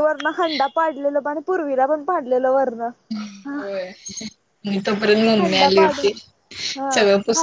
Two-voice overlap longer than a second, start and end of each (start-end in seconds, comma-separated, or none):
none